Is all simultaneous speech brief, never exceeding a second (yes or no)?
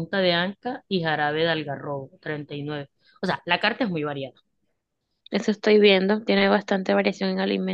yes